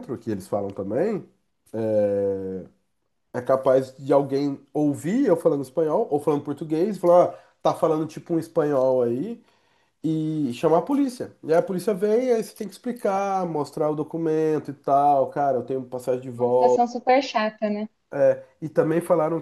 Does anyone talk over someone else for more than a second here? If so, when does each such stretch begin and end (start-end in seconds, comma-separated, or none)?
none